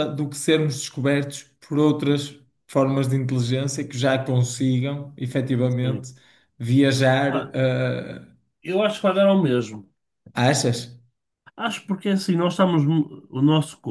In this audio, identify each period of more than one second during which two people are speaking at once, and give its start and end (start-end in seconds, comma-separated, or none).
none